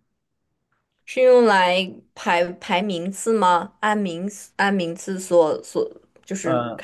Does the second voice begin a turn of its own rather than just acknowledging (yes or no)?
no